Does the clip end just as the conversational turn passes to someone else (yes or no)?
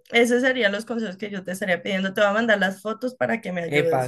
yes